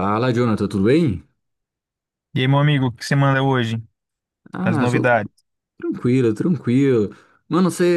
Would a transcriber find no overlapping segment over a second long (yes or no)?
yes